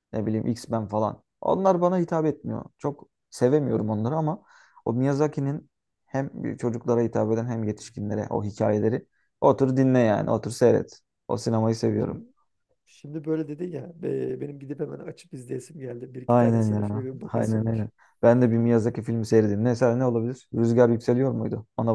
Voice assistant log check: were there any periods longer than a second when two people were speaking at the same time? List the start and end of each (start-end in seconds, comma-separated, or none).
16.3-17.9